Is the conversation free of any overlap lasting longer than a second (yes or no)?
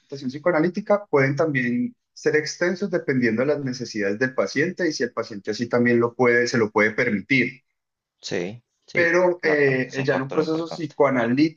no